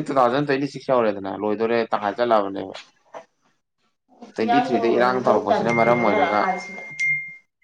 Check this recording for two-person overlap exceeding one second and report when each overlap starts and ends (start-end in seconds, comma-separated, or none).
4.4-6.4